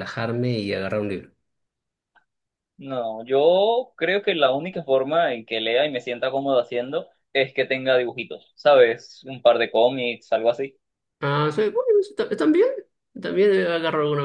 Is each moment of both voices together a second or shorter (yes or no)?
yes